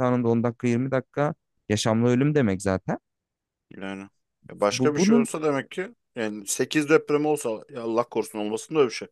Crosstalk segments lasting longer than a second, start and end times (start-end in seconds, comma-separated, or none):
none